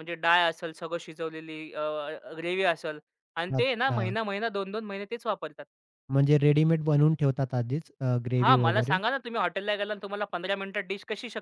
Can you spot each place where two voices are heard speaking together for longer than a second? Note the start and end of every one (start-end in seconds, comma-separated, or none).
none